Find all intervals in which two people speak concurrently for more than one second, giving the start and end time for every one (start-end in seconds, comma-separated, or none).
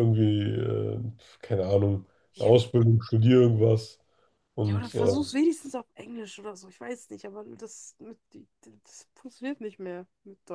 none